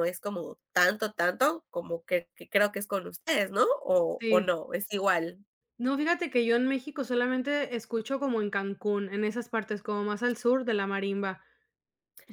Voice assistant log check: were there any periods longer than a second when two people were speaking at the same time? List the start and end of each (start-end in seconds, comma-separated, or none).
none